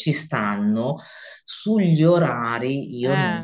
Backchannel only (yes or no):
yes